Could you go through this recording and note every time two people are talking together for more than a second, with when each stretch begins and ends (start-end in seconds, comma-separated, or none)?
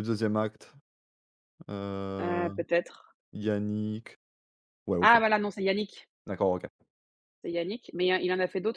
none